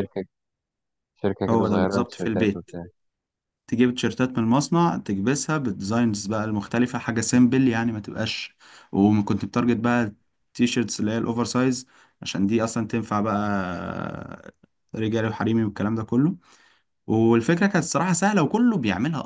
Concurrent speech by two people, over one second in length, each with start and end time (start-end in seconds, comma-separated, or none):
1.5-2.7